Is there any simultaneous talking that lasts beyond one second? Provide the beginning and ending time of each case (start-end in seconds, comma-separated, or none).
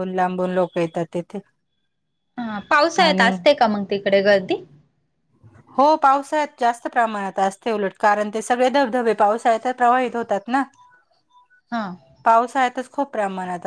none